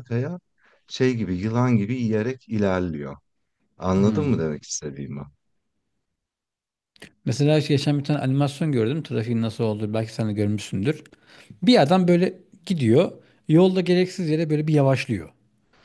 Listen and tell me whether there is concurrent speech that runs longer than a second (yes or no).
no